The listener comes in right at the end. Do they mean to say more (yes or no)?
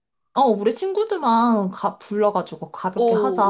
yes